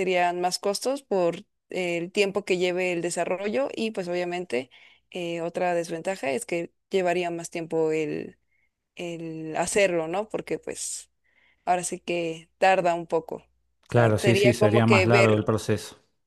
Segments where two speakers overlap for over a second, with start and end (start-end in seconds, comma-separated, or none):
13.9-15.5